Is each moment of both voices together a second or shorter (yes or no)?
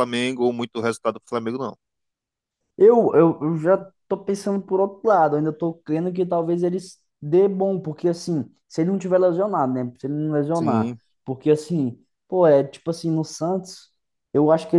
yes